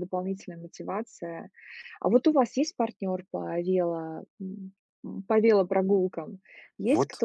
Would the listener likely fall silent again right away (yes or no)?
no